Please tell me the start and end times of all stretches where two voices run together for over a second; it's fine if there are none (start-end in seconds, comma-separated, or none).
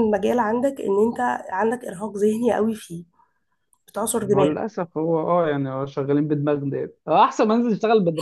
none